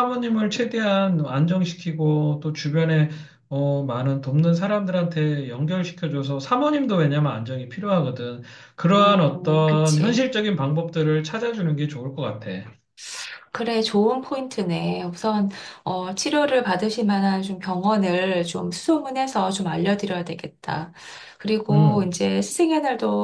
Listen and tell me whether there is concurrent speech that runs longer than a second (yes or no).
yes